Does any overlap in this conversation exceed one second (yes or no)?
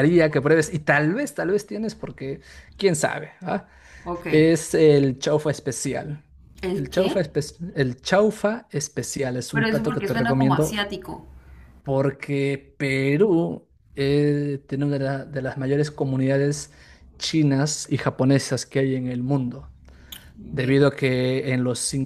yes